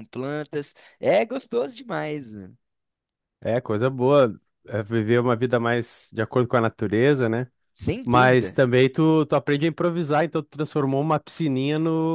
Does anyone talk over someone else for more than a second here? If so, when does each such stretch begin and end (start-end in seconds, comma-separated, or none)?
none